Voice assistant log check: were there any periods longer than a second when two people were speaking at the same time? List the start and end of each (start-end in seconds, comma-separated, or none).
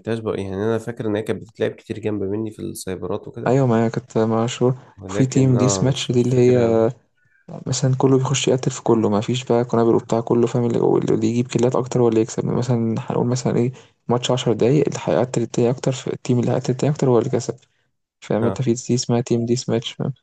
5.0-6.6